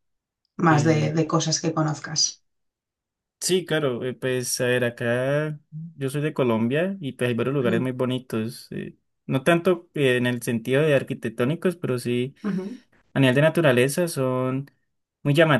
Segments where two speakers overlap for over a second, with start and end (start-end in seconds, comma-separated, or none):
none